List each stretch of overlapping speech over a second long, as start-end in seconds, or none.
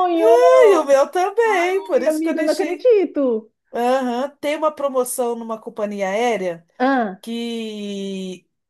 1.4-2.9